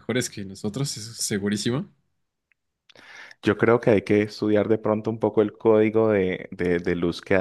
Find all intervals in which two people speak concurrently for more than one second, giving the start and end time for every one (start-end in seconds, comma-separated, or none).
none